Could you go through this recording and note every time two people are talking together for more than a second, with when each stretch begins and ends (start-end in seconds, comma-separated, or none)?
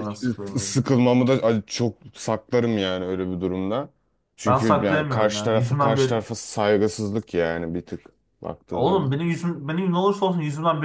4.5-6.2